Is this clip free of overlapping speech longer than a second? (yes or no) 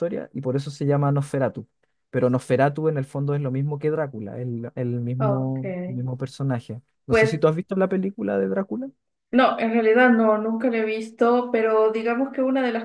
yes